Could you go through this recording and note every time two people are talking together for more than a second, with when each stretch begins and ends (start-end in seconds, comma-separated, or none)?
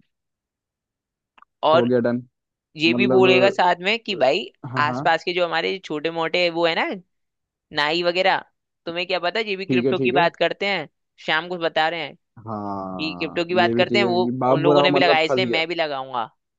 12.8-15.6